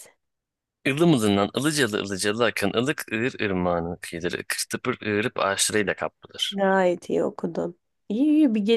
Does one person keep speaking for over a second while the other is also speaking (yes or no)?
no